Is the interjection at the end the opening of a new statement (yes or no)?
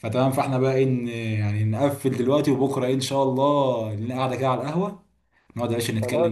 yes